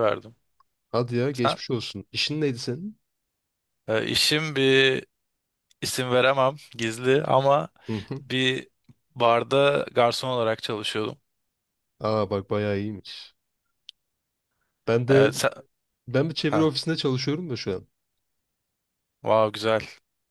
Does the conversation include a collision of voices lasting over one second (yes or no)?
no